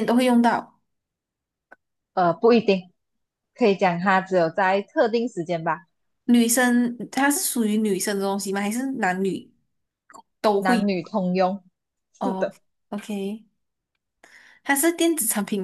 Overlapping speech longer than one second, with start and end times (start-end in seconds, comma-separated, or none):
none